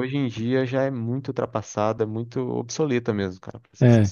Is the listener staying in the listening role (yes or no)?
no